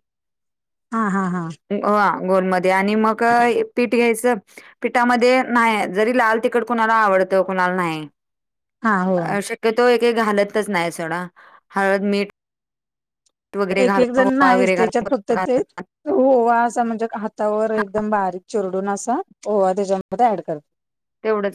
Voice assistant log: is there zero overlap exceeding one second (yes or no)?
no